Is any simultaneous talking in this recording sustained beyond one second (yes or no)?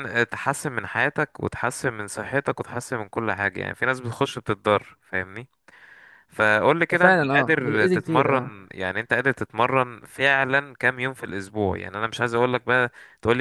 yes